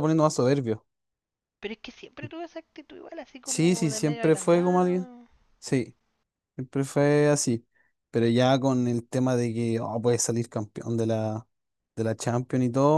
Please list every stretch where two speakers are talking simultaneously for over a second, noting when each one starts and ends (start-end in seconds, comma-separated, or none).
3.4-5.1